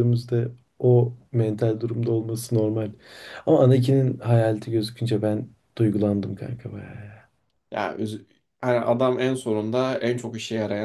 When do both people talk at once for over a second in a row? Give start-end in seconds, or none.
none